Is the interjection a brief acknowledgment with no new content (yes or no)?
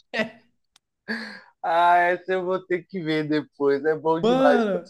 no